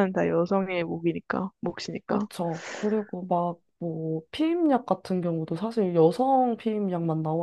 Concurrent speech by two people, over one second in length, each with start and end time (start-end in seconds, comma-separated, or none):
none